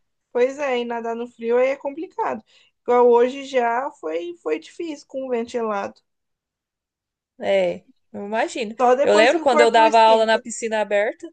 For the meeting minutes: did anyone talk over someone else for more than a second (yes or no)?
yes